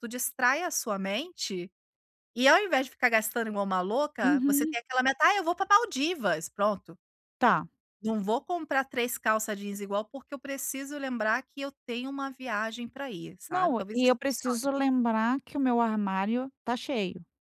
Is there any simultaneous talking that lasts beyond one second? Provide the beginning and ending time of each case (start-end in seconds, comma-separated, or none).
13.5-14.7